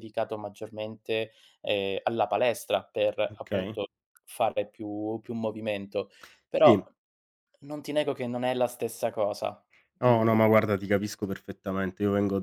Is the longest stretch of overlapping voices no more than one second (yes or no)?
yes